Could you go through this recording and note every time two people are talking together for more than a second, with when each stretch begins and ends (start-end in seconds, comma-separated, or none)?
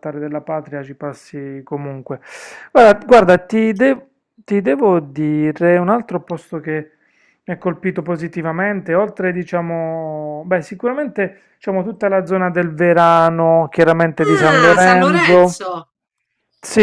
14.2-15.6